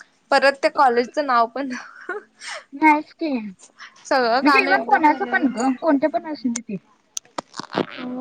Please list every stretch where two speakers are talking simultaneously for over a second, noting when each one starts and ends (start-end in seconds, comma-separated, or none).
4.1-5.5